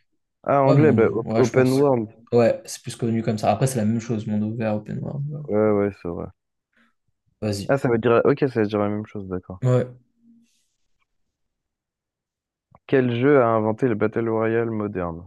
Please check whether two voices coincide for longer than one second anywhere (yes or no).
yes